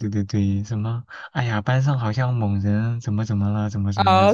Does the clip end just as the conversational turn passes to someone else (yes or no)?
yes